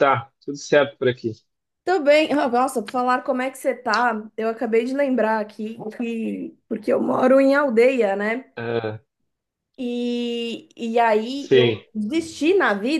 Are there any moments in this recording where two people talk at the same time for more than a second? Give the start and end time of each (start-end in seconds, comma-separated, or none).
none